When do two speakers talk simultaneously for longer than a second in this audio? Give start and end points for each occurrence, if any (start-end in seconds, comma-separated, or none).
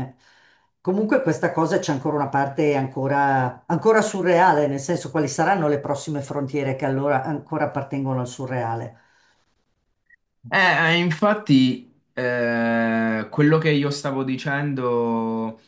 none